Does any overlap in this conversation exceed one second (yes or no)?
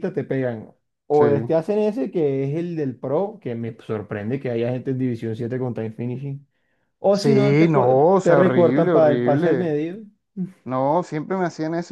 yes